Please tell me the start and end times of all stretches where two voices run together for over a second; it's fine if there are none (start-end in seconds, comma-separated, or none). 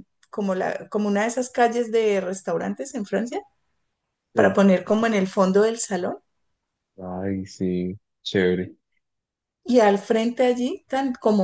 none